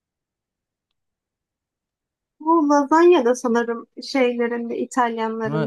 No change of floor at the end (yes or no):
no